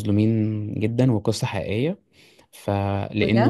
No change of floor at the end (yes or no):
yes